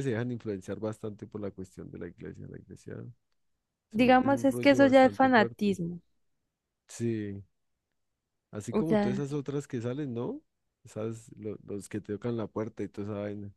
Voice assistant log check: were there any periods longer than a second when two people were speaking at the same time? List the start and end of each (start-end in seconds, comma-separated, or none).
3.9-5.8